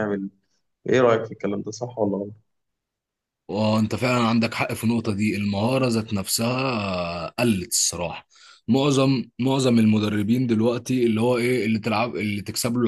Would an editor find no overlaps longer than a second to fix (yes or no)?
yes